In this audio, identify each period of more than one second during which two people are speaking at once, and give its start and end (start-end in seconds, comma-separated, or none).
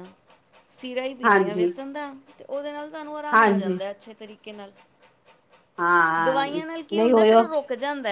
6.2-7.5